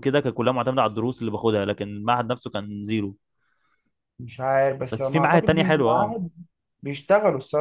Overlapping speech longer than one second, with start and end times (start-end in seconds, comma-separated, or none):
4.9-6.2